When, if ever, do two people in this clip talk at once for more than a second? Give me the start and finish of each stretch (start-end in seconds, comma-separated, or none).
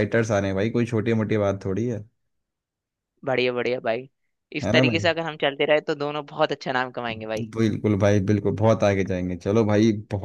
none